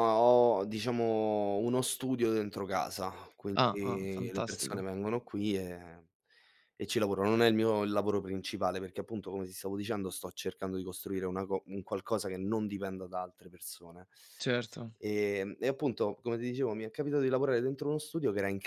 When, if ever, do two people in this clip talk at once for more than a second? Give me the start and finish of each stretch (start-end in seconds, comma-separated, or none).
3.5-4.8